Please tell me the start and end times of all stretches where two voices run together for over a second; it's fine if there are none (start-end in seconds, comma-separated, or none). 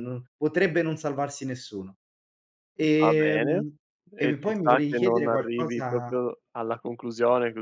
4.2-6.2